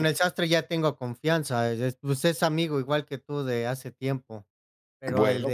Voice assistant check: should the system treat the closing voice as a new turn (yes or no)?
no